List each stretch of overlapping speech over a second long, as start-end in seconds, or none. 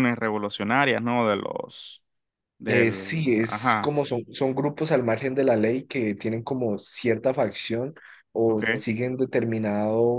2.7-4.0